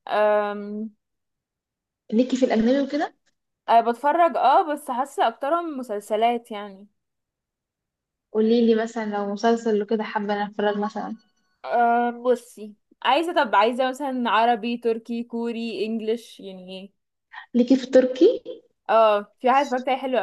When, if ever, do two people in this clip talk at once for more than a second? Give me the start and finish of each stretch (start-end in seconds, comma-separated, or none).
none